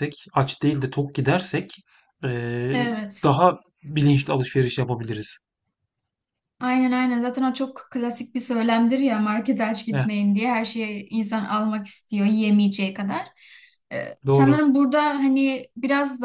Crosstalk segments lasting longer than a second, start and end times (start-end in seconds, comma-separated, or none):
none